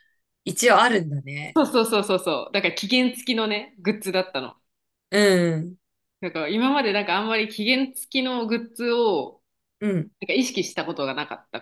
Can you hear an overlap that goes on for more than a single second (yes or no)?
no